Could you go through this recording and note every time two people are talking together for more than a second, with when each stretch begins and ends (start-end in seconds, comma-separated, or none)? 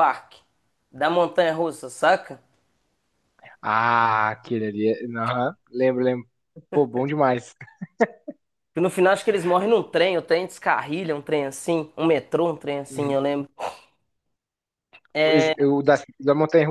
none